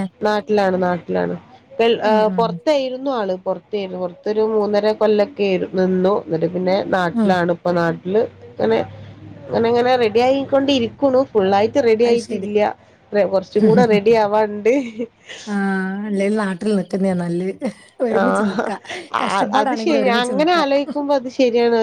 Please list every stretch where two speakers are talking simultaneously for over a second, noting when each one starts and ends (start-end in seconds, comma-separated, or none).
none